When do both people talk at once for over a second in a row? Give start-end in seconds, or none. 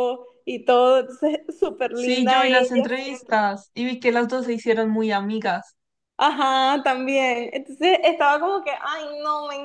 1.9-3.4